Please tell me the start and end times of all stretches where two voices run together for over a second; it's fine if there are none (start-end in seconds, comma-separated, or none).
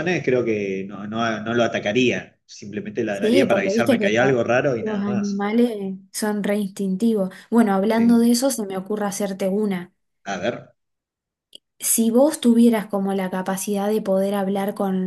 3.1-5.5